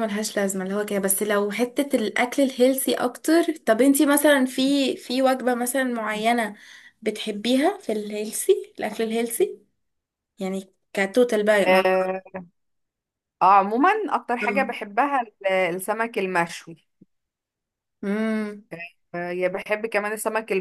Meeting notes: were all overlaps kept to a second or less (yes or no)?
yes